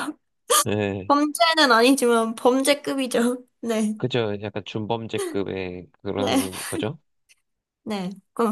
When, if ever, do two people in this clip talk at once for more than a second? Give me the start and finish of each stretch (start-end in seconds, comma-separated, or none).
none